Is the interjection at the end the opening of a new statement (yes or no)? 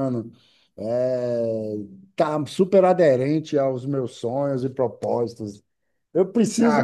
yes